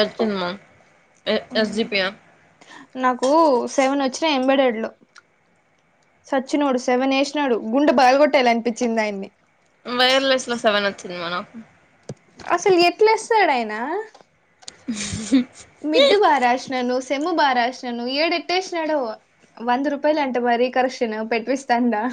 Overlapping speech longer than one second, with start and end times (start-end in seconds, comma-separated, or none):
none